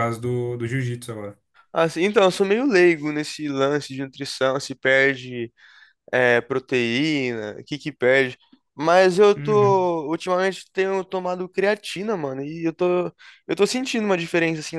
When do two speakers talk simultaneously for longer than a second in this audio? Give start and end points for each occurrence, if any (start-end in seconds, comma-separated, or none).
none